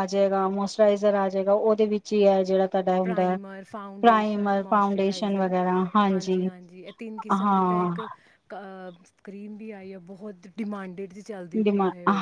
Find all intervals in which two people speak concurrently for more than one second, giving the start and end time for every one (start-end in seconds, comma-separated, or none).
4.0-5.5